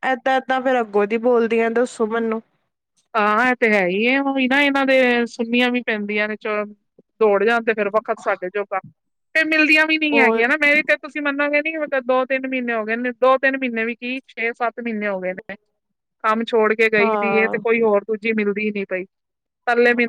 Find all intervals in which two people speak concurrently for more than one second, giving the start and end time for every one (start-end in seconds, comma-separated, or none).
none